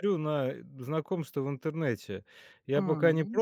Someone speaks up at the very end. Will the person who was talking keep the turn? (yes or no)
yes